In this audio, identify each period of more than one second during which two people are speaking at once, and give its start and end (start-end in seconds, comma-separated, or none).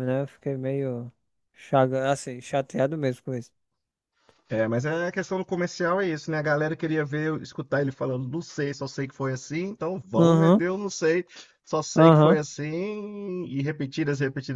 none